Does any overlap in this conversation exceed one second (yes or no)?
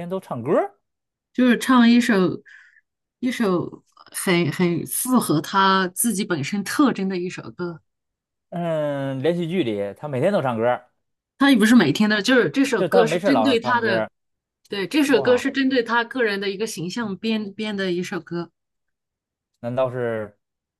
yes